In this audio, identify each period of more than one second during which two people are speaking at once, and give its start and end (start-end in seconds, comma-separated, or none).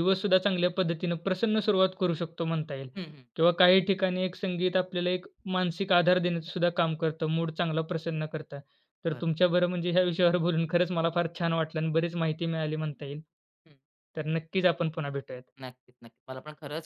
none